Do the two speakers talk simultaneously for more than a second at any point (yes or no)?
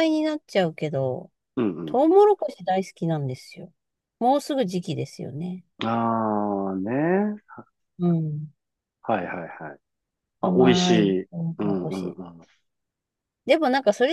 yes